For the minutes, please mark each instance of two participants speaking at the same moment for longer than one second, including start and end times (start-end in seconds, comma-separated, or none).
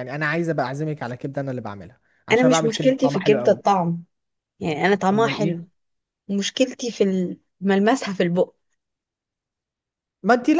2.3-3.6